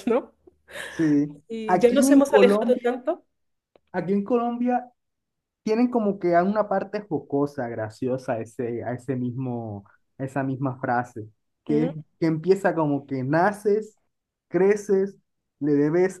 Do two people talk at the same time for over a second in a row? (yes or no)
yes